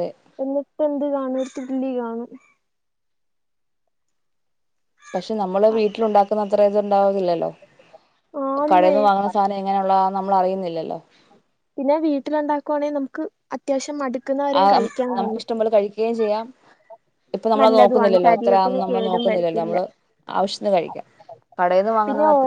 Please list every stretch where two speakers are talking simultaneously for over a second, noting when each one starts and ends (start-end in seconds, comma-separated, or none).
17.6-19.8